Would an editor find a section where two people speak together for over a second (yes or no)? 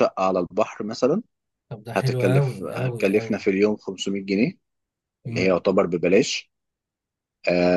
yes